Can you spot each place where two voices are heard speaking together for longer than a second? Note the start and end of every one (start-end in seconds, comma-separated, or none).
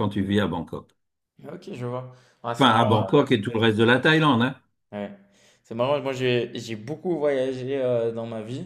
none